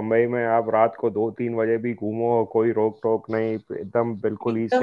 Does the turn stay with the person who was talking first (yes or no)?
no